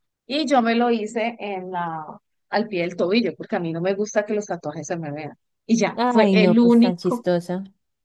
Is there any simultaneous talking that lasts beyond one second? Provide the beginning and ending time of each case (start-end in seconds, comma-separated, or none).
5.9-7.3